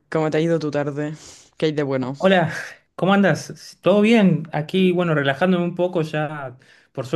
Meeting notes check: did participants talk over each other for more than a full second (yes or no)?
no